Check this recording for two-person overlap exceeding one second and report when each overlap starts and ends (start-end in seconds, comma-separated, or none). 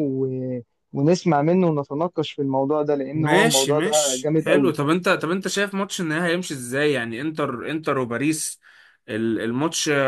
3.1-4.7